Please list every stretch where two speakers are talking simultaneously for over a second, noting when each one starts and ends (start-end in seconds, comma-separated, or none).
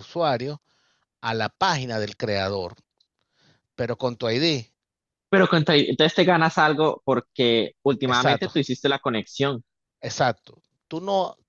none